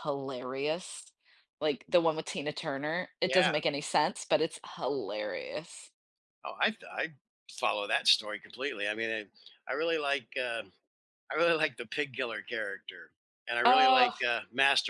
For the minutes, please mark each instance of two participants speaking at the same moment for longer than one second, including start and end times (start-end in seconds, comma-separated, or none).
none